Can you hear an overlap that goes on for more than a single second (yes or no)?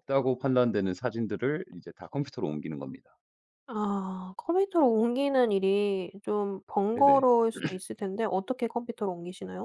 no